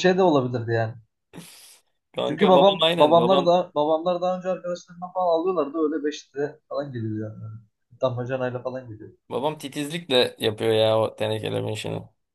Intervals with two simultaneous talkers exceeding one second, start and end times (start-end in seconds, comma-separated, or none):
2.3-3.5